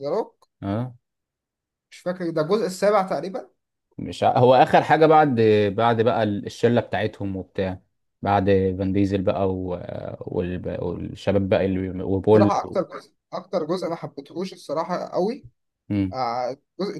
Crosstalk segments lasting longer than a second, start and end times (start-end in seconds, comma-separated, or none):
none